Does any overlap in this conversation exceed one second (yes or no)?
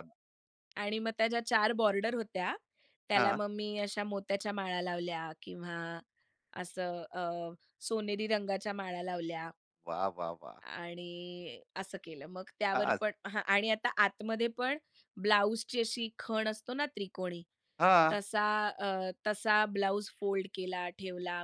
no